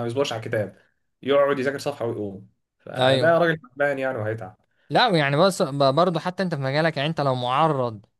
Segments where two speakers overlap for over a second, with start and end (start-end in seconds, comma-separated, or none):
none